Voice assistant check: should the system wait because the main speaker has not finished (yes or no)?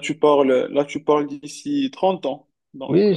no